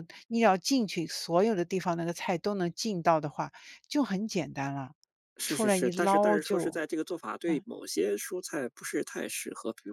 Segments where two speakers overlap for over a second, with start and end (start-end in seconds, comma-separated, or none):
5.5-6.8